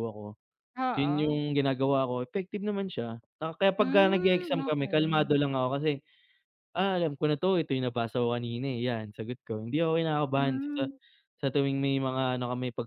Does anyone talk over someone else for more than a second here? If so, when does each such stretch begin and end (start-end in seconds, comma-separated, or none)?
3.8-5.3